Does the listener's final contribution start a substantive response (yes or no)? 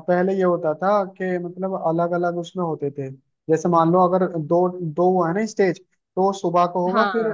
no